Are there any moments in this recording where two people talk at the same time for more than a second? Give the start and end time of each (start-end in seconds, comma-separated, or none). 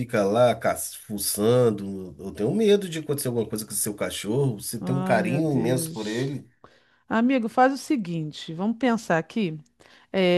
4.8-6.4